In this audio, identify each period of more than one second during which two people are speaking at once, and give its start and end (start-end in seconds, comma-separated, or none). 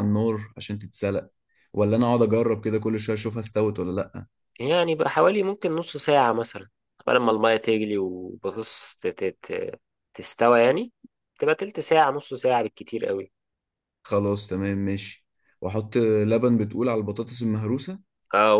none